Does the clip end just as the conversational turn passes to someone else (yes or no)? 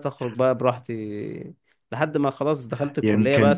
no